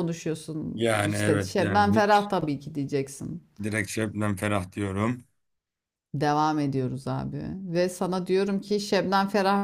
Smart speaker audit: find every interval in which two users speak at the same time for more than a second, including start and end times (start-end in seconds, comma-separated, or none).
0.7-2.3